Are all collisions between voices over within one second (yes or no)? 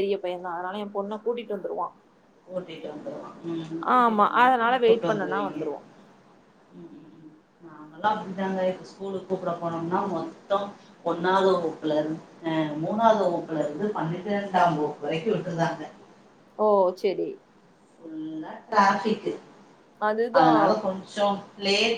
no